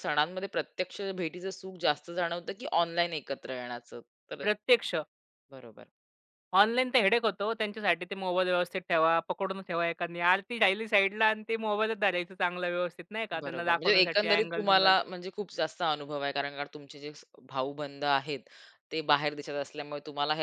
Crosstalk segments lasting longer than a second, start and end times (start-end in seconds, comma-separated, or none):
13.4-14.9